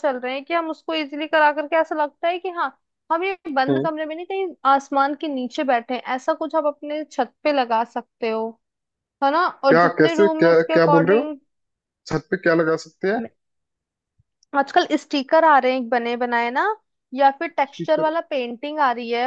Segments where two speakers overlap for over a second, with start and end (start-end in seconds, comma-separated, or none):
9.7-11.2